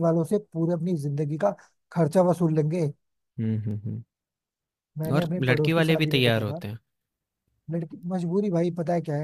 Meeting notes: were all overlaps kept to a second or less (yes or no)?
no